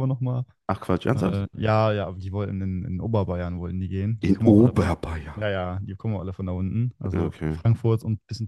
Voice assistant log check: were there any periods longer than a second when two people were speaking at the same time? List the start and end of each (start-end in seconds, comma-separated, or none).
4.2-5.4